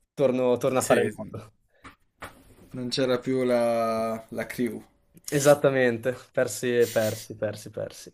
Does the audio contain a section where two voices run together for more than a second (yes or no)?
no